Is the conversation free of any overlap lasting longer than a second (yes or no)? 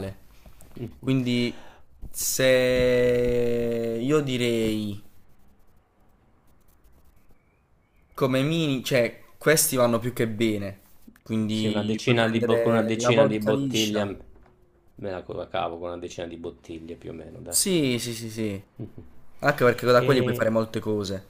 no